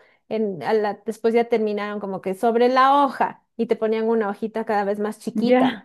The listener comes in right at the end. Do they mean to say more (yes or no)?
no